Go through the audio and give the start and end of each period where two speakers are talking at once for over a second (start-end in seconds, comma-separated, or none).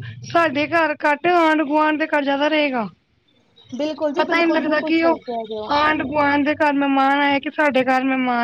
4.2-5.8